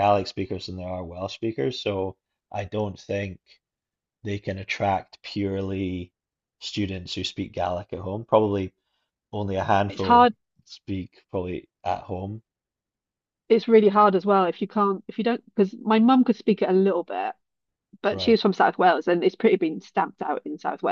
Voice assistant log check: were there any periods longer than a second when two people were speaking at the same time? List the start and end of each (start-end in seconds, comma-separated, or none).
none